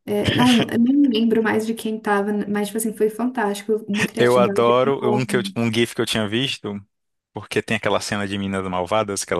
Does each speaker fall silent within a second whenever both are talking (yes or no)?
no